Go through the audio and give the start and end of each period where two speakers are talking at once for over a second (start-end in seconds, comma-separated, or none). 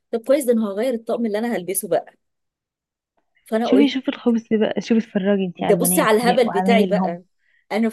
5.6-7.2